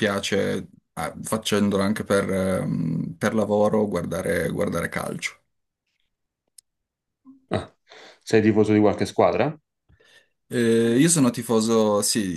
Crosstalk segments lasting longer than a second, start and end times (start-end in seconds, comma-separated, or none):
none